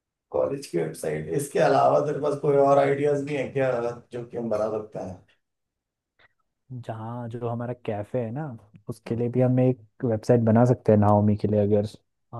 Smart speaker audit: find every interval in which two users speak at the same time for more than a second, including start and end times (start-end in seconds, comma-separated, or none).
none